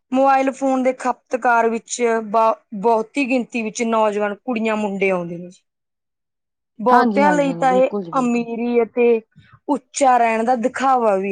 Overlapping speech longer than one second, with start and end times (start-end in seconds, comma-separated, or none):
6.9-8.4